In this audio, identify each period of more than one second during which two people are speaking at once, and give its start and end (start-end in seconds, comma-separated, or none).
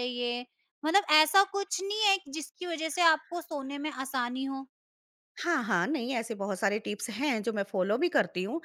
none